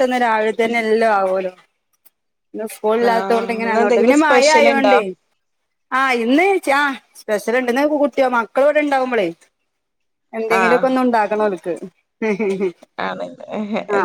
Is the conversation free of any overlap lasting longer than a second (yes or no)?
no